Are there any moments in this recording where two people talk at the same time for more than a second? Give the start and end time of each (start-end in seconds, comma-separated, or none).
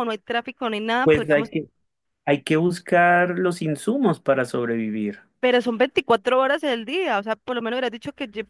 none